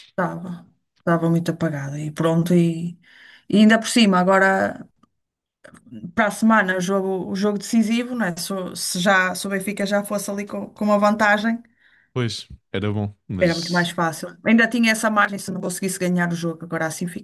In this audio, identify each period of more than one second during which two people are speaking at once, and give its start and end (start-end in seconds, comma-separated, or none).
none